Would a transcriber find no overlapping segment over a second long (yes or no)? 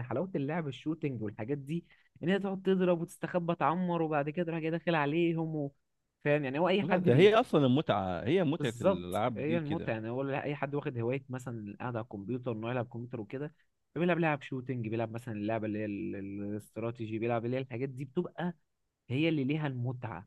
no